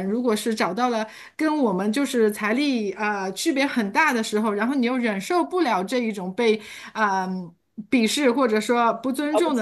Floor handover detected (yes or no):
no